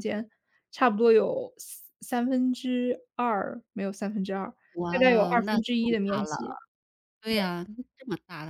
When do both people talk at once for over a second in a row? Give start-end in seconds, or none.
4.9-6.4